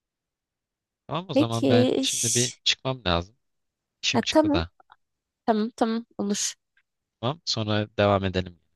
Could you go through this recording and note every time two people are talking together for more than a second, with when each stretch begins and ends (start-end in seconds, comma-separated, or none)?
1.3-2.6